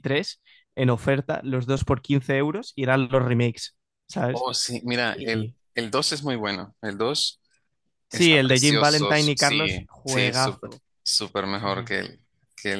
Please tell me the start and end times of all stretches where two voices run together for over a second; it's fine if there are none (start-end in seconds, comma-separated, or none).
8.1-10.7